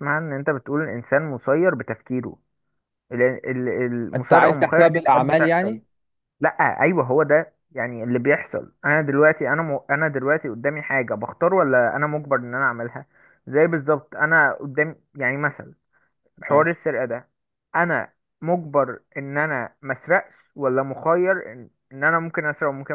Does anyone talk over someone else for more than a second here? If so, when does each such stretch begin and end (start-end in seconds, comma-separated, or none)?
4.2-5.8